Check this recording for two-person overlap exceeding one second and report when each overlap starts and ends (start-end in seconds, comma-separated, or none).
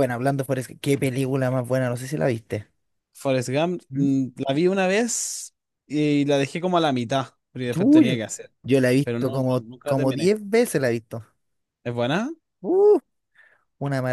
9.0-10.3